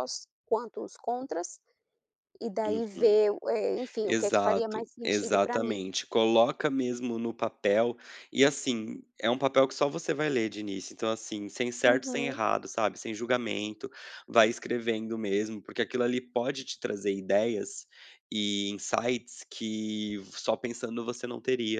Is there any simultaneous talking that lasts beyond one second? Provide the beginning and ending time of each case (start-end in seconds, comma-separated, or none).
4.0-5.8